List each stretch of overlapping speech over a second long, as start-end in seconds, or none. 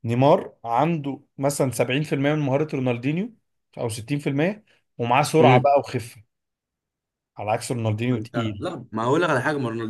none